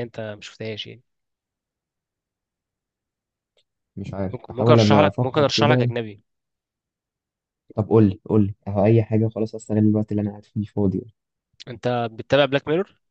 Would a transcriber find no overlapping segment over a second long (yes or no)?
no